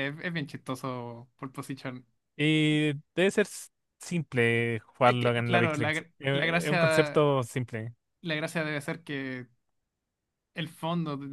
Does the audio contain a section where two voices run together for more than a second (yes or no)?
yes